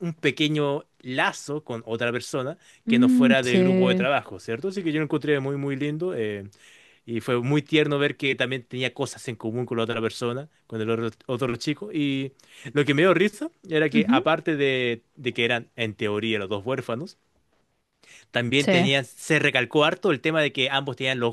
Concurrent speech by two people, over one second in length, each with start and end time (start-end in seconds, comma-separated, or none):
2.9-4.1